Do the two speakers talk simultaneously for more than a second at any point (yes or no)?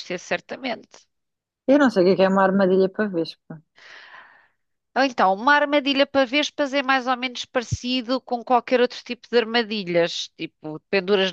no